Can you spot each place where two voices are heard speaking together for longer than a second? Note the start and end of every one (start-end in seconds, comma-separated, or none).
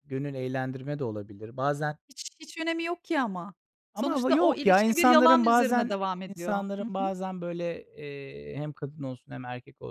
3.9-7.1